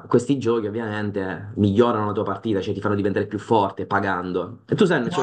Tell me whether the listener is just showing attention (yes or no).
no